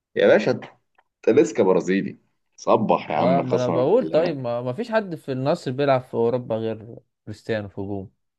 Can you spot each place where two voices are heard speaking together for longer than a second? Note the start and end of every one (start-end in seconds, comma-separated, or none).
3.2-4.4